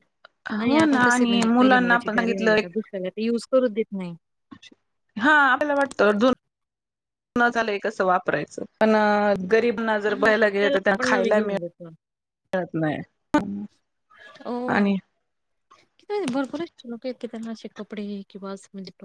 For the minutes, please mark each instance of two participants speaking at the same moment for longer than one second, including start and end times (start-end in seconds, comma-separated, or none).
0.6-2.7